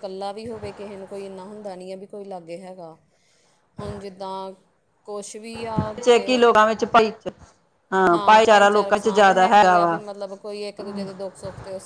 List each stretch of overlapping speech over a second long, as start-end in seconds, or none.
8.2-10.0